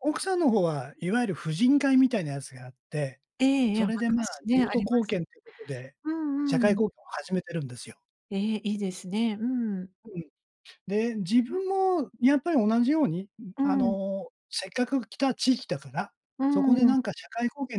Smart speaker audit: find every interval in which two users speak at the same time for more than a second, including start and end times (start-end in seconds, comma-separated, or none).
3.7-5.2